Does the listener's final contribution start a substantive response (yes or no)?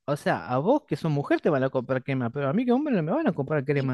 yes